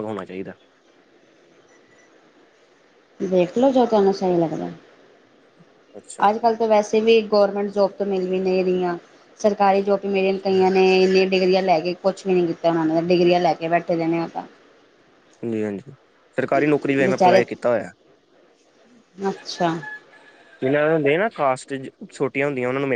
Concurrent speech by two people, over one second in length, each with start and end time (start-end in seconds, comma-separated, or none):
none